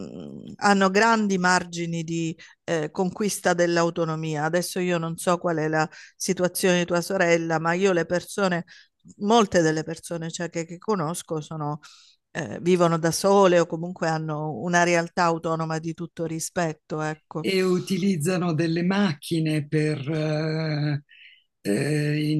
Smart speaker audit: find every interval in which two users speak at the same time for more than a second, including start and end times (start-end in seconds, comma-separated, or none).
none